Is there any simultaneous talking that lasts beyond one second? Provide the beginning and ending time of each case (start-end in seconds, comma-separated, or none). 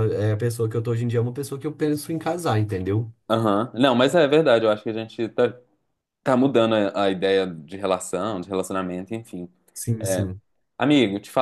none